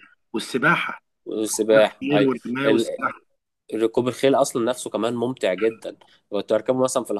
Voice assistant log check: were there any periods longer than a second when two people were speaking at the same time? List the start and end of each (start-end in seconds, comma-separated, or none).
1.5-3.0